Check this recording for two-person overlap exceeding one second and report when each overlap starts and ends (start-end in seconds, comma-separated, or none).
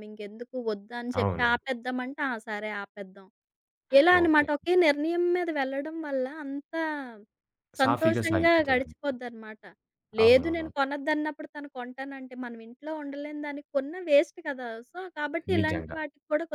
7.8-9.1